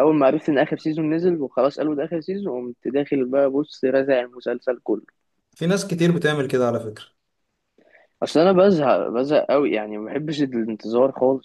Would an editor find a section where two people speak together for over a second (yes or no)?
no